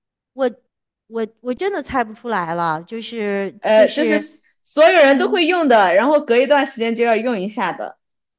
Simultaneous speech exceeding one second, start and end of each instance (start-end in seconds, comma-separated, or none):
none